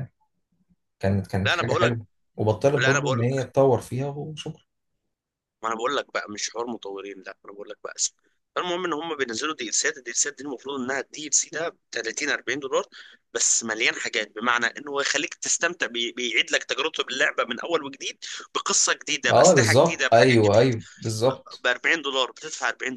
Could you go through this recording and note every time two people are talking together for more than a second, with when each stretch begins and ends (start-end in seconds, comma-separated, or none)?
19.3-20.7